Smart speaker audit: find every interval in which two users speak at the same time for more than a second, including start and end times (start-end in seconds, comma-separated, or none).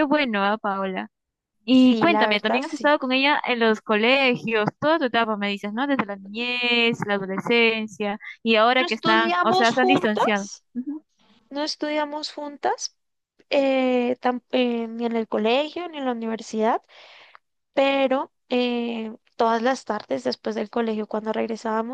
1.7-2.9, 8.8-10.6